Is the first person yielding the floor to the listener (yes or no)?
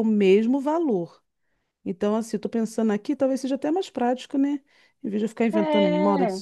no